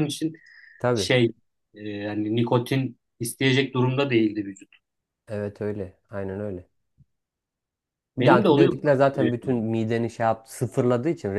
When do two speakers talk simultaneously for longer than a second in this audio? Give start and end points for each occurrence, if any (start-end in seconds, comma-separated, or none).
8.2-9.6